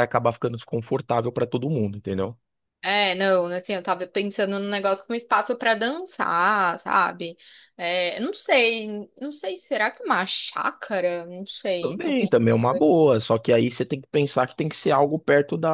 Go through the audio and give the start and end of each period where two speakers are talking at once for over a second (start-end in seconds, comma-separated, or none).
11.8-13.2